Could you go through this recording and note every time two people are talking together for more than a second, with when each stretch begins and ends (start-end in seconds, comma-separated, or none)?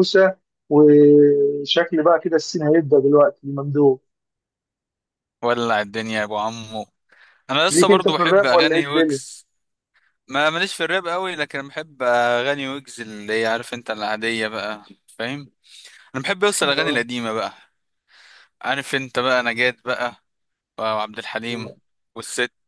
7.7-9.2